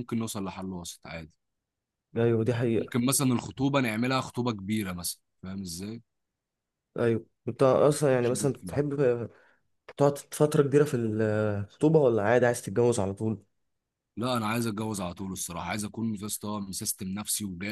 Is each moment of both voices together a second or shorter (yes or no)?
yes